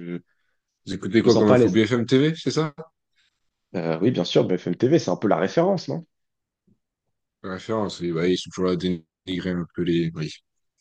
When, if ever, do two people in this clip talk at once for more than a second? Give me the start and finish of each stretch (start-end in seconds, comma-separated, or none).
none